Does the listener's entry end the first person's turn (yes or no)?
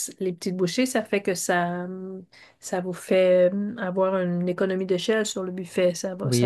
yes